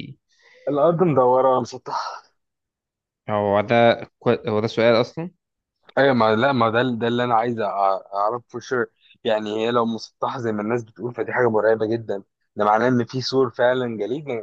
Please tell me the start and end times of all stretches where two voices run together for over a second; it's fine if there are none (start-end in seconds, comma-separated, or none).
none